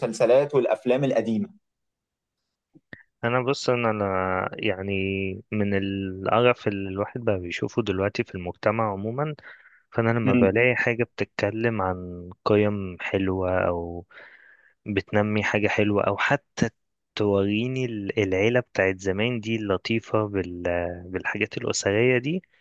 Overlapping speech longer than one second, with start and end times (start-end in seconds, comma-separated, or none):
none